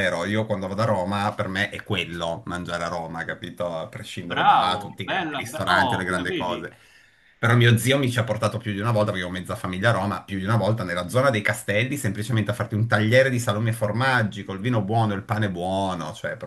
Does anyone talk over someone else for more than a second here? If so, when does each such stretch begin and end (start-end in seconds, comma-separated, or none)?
4.3-6.6